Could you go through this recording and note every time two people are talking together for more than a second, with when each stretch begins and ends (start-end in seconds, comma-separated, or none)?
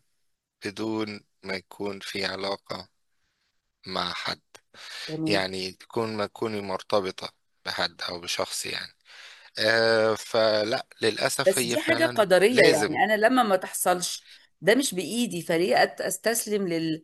11.5-13.0